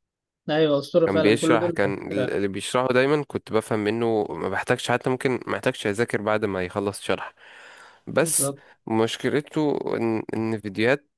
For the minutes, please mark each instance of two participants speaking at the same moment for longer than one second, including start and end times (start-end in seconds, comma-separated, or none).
1.1-2.4